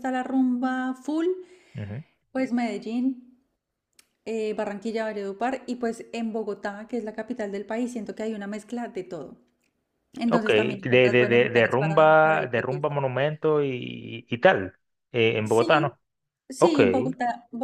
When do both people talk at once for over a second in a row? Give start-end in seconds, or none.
10.3-12.9